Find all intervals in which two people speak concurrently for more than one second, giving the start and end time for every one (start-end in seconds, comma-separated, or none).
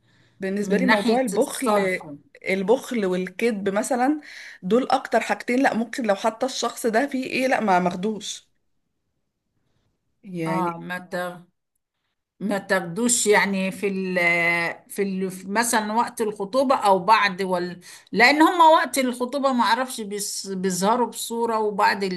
0.6-2.0